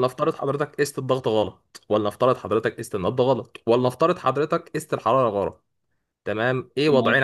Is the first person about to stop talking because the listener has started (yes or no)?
no